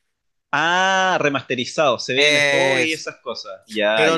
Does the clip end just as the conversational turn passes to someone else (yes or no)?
yes